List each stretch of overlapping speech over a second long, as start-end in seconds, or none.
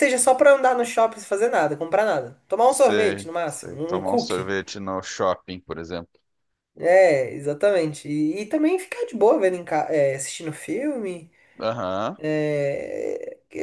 2.6-4.5